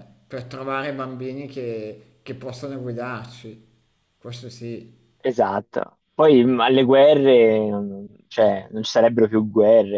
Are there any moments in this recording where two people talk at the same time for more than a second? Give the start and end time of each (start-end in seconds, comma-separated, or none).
none